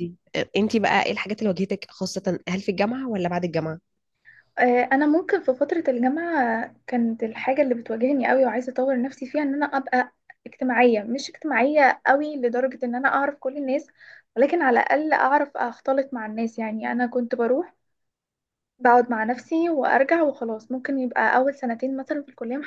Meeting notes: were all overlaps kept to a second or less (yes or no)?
yes